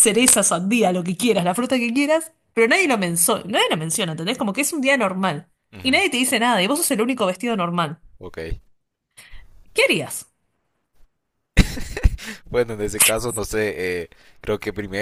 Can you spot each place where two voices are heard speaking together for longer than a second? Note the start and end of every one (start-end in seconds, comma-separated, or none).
none